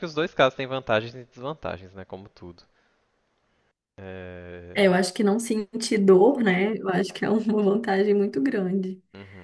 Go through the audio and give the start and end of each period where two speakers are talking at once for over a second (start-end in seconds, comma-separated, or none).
none